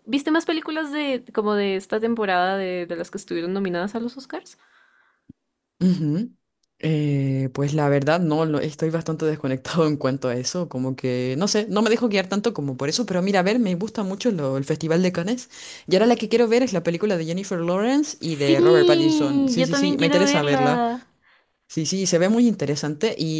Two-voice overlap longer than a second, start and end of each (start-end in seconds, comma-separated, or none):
18.2-20.8